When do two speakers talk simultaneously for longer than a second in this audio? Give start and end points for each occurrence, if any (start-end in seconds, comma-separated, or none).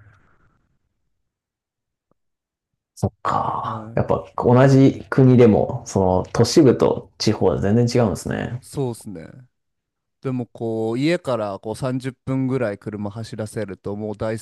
none